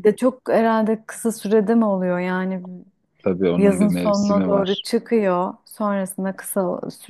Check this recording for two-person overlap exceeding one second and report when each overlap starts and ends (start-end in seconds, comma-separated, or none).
3.6-4.8